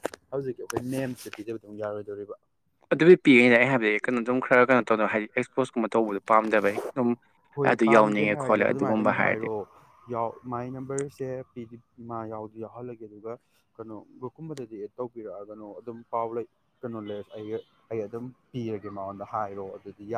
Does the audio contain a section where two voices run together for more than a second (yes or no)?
yes